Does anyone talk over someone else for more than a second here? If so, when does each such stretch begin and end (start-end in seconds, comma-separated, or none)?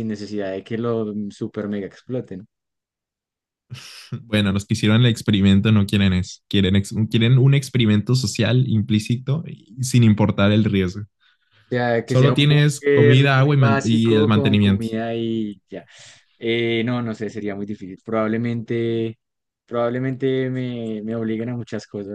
12.0-14.9